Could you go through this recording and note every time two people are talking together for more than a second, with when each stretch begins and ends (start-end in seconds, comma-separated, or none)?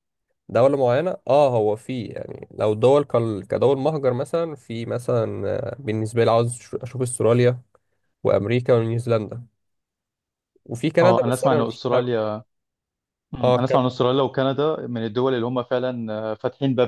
11.0-12.2